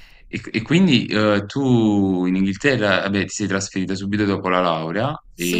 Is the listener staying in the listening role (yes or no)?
no